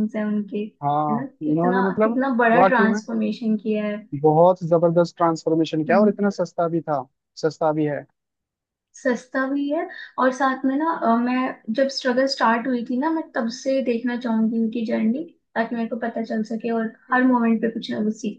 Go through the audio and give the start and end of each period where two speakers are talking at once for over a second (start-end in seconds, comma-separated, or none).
1.1-3.0